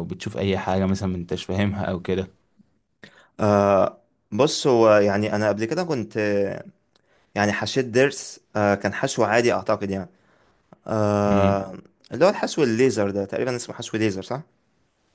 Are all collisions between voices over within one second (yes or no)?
yes